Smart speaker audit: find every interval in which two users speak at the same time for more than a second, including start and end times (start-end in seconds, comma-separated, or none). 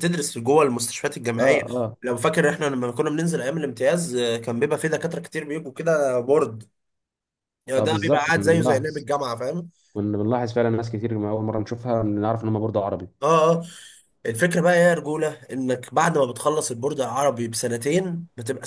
7.8-9.1